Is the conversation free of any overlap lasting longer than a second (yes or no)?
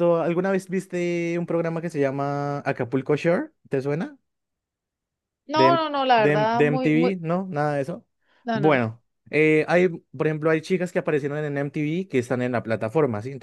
no